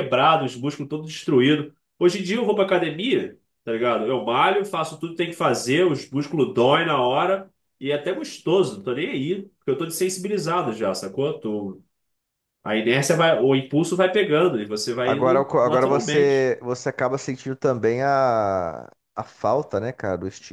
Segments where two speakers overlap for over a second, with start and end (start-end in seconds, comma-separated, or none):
15.0-16.5